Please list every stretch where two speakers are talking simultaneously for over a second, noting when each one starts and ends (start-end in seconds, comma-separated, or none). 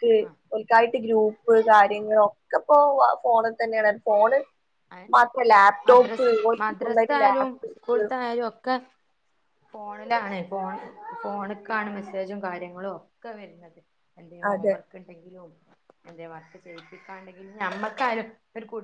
5.9-8.0